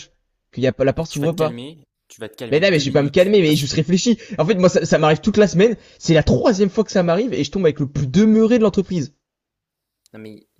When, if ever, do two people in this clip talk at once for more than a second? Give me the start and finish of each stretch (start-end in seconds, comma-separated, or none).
2.5-3.7